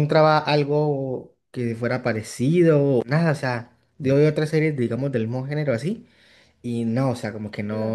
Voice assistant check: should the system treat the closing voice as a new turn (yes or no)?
no